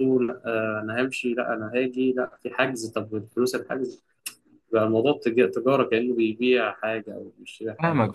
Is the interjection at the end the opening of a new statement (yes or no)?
yes